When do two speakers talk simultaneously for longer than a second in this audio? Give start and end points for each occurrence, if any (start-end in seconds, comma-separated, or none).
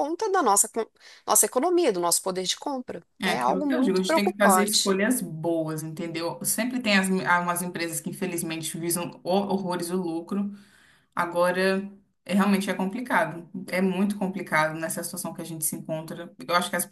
3.2-5.0